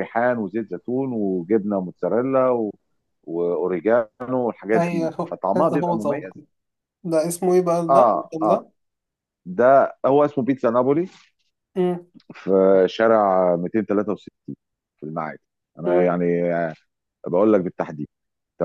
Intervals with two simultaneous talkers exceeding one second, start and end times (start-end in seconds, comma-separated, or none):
4.8-6.3